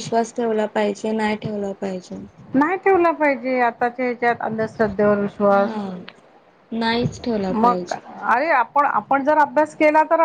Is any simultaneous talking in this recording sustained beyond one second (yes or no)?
no